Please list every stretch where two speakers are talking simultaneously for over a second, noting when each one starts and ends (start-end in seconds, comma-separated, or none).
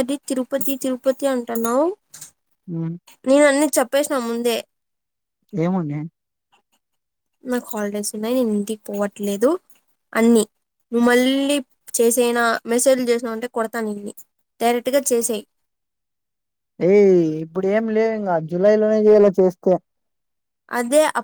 none